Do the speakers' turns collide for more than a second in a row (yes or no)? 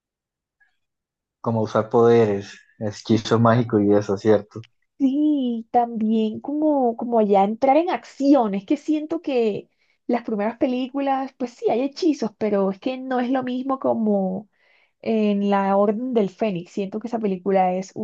no